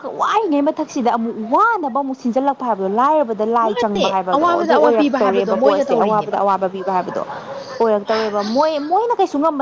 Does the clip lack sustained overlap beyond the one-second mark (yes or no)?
no